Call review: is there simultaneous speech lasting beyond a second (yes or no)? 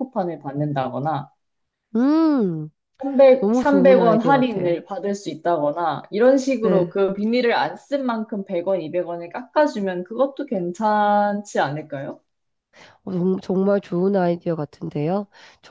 yes